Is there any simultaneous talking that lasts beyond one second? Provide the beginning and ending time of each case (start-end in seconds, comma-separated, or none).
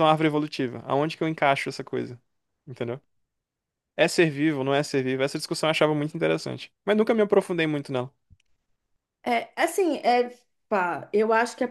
none